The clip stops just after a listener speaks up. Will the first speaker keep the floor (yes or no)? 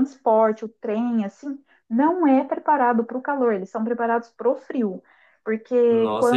no